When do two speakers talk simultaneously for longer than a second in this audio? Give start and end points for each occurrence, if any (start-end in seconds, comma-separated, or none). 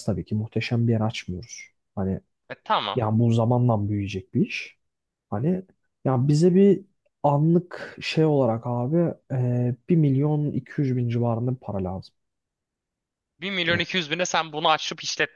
none